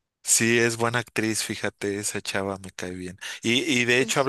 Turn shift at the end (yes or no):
no